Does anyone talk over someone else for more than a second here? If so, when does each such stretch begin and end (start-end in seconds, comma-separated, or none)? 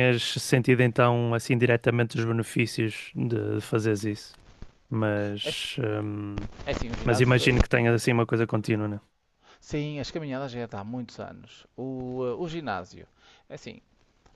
none